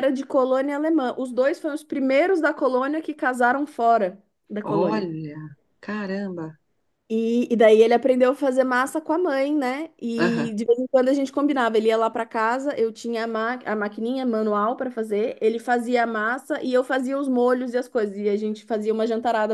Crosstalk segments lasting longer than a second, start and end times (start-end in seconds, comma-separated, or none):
none